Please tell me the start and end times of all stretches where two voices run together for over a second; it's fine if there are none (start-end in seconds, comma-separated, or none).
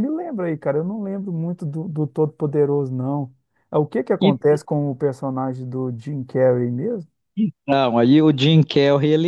none